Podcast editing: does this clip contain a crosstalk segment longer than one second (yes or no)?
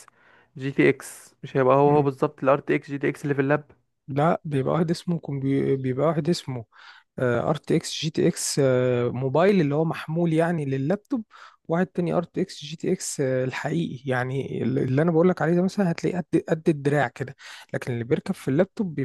no